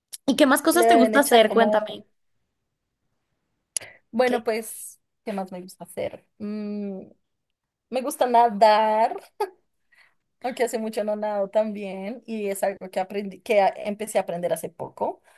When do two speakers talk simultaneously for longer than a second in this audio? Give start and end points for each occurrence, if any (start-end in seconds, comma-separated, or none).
0.7-2.0